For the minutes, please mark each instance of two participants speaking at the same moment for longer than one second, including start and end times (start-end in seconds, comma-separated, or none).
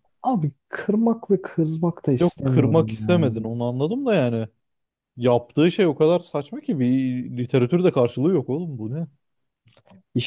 2.2-3.5